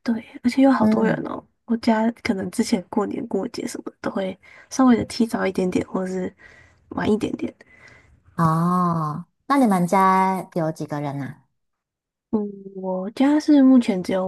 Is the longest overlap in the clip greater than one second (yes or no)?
no